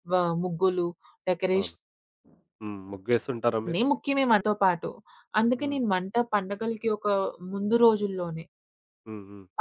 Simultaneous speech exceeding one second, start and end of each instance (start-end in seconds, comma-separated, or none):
none